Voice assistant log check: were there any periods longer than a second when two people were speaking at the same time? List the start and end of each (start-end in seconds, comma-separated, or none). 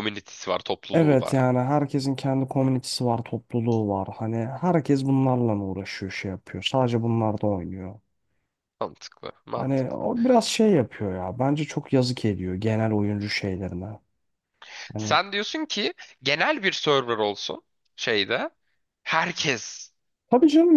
none